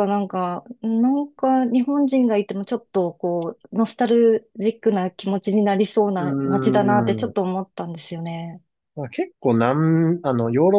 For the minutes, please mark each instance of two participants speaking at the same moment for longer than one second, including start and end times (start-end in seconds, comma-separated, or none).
6.2-7.3